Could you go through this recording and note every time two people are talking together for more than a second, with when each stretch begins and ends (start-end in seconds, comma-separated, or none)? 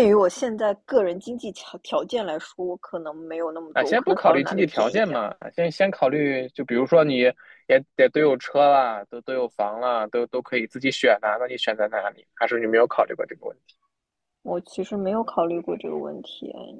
3.7-5.3